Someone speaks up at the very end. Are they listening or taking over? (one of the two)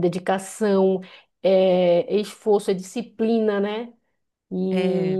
listening